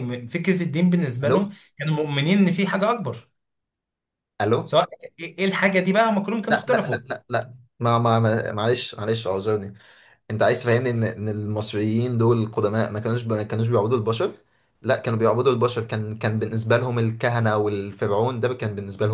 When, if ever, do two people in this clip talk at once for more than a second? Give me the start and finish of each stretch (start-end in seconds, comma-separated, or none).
none